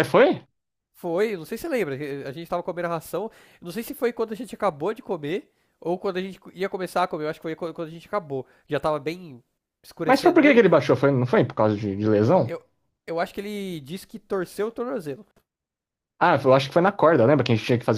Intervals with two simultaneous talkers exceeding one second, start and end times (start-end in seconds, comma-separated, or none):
none